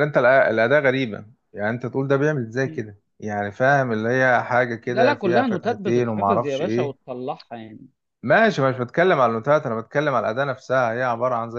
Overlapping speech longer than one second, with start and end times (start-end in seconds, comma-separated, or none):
4.9-7.0